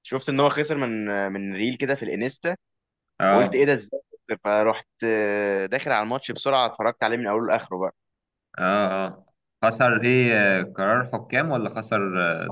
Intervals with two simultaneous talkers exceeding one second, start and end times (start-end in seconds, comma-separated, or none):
none